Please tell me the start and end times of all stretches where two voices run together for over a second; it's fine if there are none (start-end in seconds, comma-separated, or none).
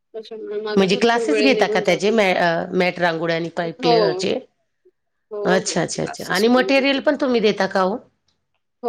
0.8-2.1, 5.4-7.0